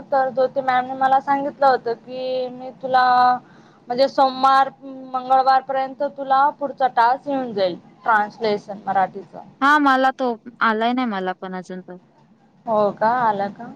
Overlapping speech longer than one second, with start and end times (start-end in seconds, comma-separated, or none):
none